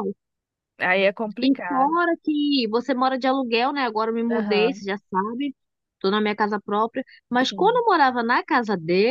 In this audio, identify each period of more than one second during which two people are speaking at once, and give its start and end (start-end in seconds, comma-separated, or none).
none